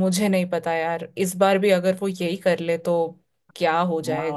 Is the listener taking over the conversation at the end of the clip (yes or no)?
yes